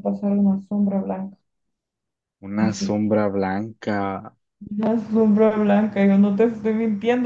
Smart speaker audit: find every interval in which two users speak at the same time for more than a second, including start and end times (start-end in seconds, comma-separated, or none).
none